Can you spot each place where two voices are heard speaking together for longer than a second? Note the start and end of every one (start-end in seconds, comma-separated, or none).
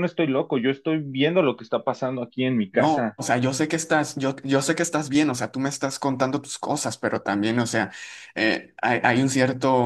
none